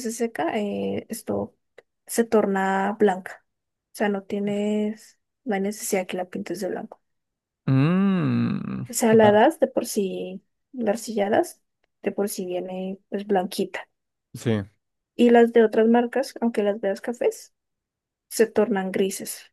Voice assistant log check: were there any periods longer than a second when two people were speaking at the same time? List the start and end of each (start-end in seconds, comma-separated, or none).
none